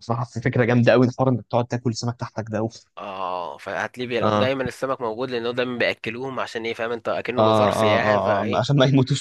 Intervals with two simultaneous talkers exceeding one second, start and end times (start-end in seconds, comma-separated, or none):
7.4-8.7